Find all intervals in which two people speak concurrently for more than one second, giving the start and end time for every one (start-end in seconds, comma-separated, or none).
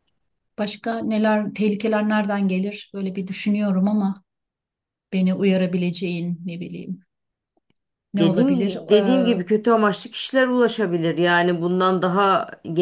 none